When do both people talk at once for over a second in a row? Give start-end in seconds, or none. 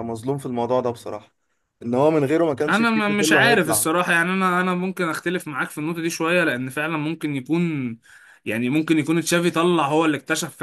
2.7-3.9